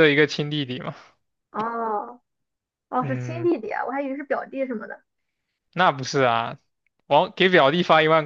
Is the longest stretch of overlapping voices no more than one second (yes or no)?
yes